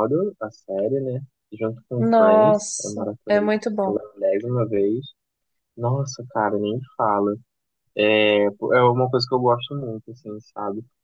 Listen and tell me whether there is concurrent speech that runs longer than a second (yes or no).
yes